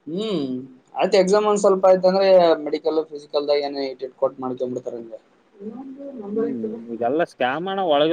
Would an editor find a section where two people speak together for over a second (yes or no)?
no